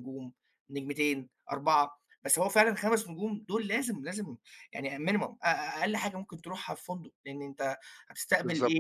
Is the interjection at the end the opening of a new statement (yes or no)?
no